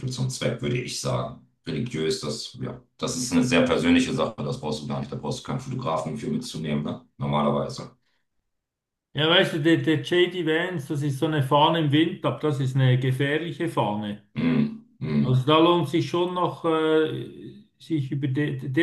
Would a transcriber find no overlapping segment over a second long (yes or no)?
yes